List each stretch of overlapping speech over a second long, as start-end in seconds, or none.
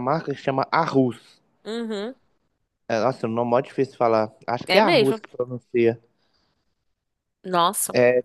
none